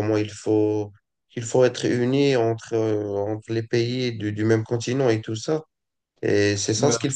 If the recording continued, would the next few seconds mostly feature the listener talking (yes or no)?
no